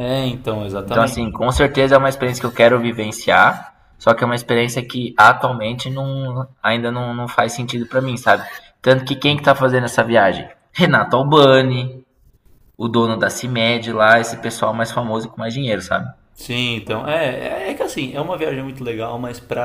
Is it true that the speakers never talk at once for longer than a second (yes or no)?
yes